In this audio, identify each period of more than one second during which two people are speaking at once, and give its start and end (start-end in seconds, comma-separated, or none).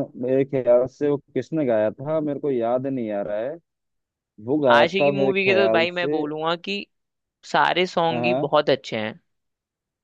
4.7-6.2